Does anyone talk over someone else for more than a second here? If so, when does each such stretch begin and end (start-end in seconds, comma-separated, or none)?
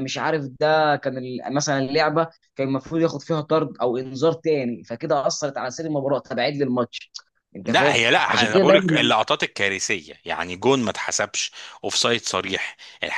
7.6-9.1